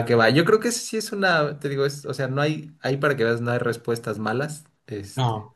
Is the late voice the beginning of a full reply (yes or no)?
no